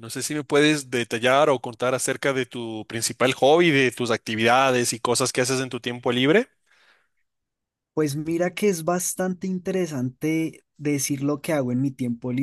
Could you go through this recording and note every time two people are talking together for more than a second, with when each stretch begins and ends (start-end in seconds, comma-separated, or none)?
none